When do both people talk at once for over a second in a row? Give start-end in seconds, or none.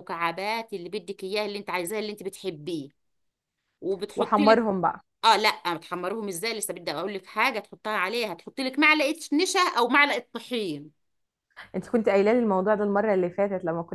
none